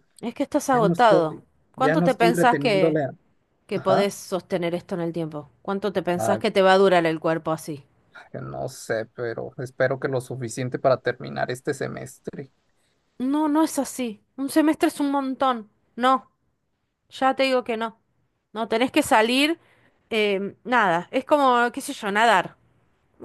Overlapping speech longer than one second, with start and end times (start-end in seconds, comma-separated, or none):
0.7-3.0